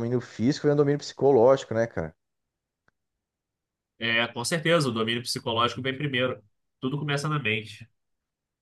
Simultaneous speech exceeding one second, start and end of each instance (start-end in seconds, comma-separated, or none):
none